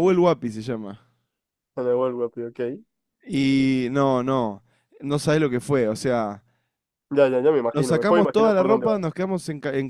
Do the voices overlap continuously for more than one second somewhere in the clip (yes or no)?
yes